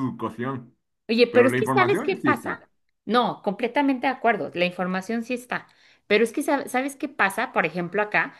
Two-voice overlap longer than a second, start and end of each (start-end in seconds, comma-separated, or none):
1.3-2.6